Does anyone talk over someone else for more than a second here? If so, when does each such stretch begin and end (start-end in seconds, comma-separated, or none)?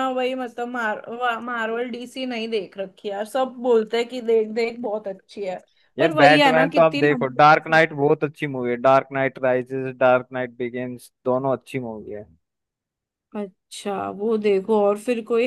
6.0-7.8